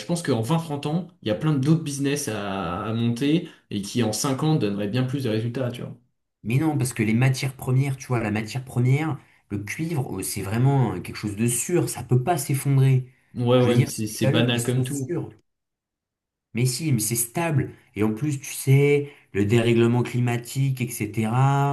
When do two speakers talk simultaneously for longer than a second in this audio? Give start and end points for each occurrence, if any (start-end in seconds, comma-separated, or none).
13.6-15.2